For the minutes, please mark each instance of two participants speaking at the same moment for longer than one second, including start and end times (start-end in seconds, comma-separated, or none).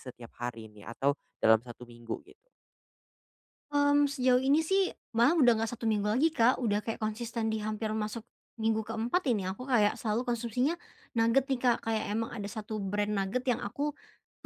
none